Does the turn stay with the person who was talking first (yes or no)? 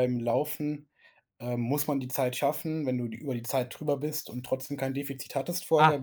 no